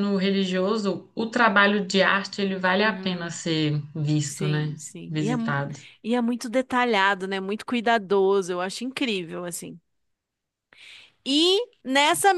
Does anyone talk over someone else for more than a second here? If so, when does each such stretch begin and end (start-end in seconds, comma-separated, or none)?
4.2-5.6